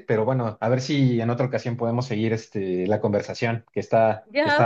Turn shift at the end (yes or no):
yes